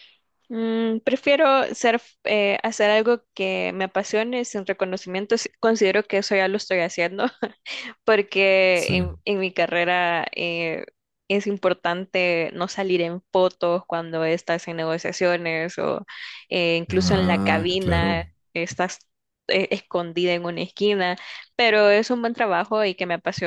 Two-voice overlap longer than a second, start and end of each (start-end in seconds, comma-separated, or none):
16.9-18.3